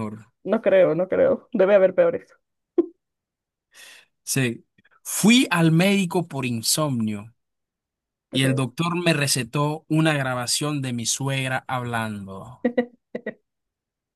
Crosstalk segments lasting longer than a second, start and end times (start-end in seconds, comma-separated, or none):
none